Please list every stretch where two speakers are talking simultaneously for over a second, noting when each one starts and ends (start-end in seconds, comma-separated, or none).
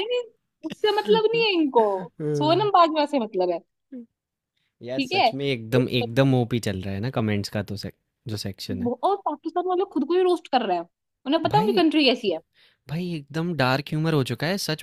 5.0-6.3